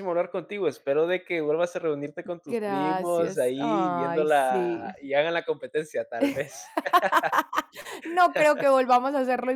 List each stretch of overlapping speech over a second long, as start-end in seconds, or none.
2.5-5.1